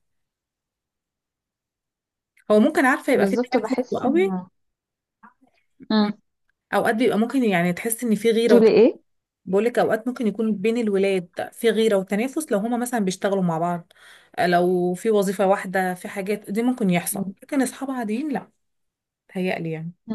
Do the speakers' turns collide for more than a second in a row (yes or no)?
yes